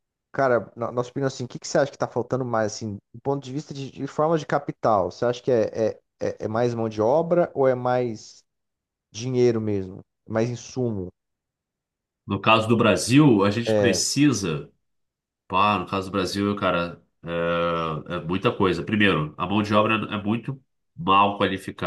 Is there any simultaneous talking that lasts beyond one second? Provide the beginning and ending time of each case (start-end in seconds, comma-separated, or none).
none